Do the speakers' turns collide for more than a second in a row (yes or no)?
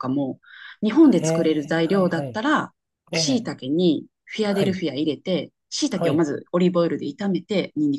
yes